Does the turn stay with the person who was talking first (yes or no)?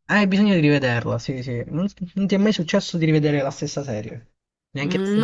no